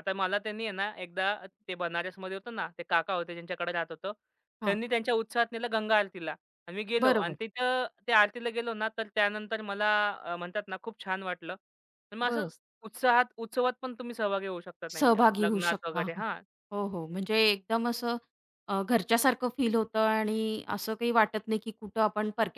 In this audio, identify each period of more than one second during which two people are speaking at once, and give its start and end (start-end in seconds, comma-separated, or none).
14.9-16.2